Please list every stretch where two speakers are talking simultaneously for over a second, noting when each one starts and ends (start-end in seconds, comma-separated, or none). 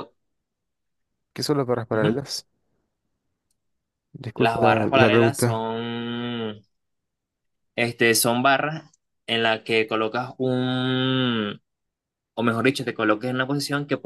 4.3-5.7